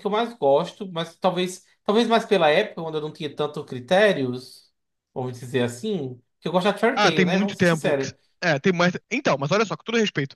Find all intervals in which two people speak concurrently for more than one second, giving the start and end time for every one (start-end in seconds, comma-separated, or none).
6.9-8.2